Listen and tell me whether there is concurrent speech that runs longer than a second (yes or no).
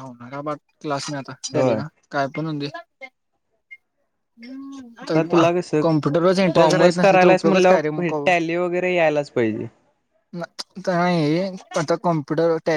yes